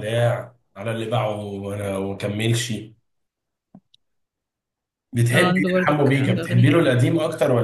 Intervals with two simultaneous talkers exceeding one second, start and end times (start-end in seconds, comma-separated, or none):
5.3-7.0